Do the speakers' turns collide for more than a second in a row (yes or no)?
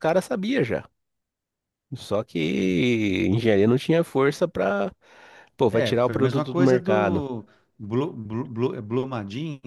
yes